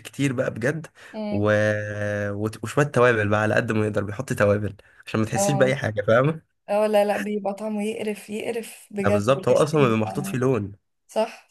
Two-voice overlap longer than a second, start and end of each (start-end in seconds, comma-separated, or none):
9.0-10.4